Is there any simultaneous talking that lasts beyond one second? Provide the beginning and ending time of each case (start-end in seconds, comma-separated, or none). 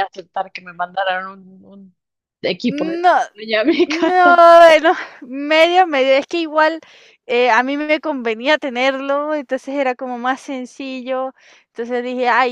none